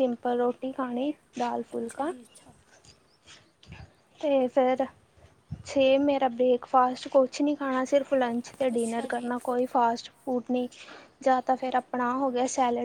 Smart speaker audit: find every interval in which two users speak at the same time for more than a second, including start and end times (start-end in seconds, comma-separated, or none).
none